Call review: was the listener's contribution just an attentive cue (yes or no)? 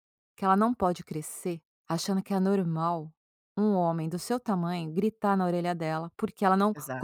yes